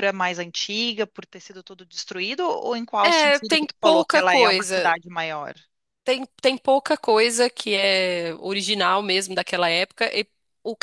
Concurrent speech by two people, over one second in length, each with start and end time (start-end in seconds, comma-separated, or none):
3.0-5.0